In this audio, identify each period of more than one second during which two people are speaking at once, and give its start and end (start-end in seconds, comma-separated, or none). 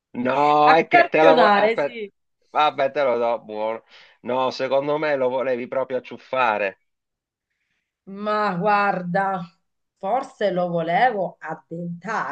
0.6-2.0